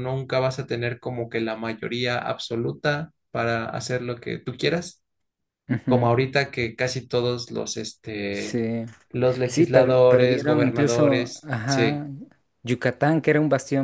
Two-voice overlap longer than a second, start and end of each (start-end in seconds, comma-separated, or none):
9.5-12.1